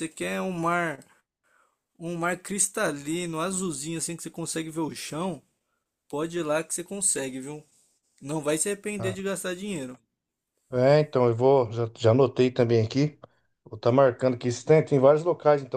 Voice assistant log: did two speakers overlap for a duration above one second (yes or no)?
no